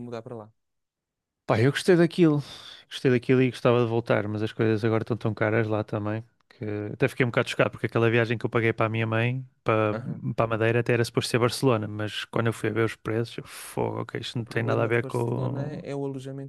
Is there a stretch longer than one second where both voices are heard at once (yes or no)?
yes